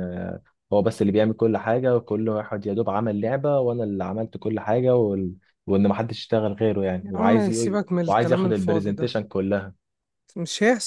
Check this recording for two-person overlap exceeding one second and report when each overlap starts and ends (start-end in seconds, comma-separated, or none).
7.0-9.2